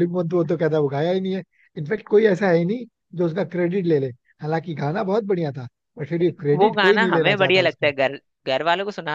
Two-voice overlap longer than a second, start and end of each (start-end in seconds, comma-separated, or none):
6.5-7.9